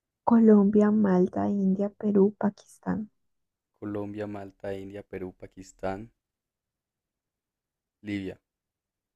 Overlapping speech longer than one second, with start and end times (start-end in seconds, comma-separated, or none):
none